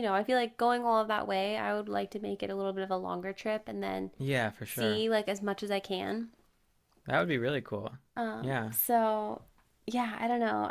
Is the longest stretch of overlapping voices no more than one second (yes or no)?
yes